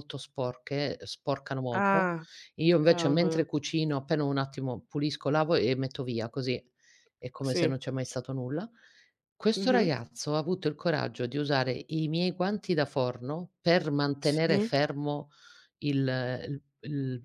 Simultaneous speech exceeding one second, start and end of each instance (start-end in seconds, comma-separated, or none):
none